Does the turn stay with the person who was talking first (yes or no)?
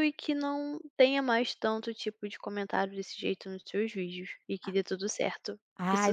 no